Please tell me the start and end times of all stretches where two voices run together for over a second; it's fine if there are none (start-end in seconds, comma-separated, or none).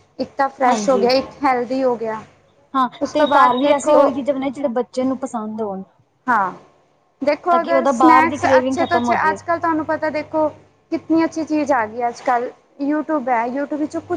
7.5-9.4